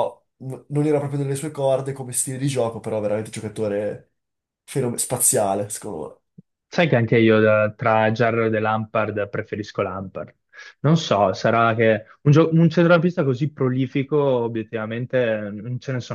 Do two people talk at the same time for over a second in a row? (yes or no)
no